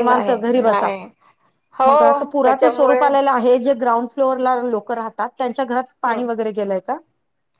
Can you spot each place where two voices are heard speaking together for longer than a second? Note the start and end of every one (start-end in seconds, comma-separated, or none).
1.9-3.1